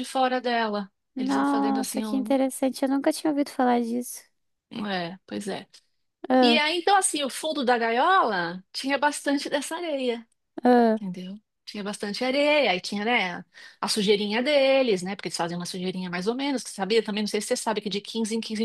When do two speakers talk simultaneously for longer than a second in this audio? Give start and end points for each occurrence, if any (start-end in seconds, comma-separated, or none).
1.1-2.4